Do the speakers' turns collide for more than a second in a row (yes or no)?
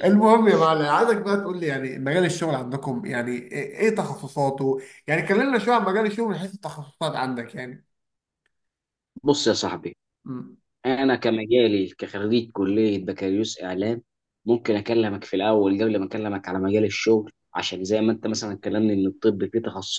no